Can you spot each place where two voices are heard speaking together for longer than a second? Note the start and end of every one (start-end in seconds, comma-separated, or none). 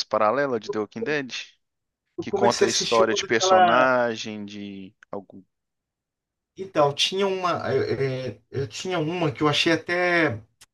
2.2-3.9